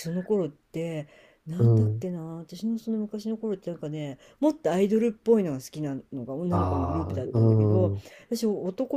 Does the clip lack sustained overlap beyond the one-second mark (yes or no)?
no